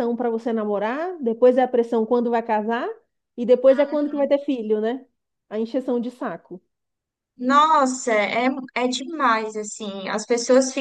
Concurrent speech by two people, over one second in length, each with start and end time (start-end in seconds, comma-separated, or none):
none